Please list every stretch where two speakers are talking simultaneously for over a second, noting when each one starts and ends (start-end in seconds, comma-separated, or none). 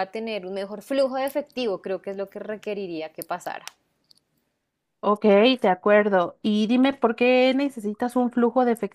none